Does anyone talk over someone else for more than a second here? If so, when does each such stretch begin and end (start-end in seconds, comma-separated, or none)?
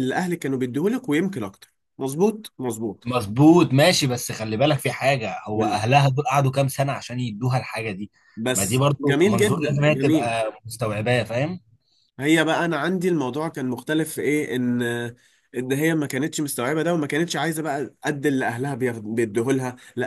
8.5-10.3